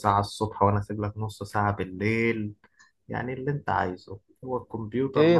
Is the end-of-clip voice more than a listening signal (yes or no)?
yes